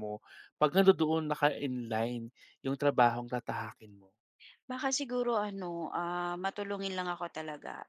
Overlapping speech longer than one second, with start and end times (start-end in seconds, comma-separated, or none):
none